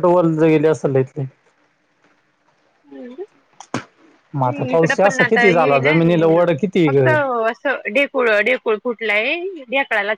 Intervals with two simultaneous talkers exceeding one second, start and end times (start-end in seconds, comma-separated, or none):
4.4-6.0